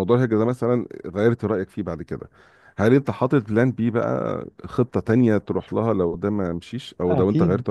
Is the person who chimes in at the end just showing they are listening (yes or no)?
no